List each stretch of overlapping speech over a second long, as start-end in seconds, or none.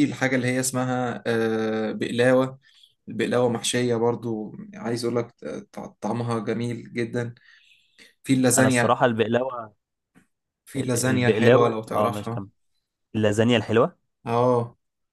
10.8-12.5